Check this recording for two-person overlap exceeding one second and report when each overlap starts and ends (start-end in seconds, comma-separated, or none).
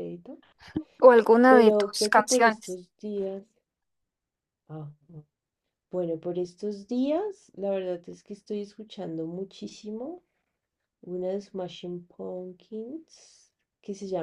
1.5-2.8